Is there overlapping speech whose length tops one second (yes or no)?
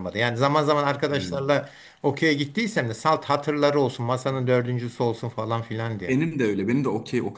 no